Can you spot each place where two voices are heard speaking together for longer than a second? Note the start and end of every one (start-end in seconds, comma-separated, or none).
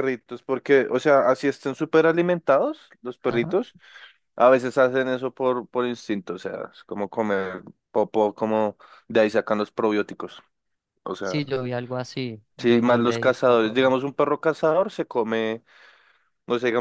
12.6-13.9